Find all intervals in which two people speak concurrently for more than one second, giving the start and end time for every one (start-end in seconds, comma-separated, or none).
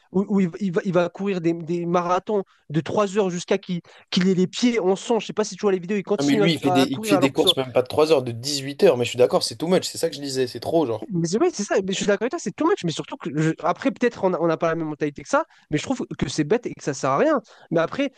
6.2-7.5